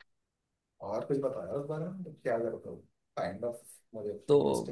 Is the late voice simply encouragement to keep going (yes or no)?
no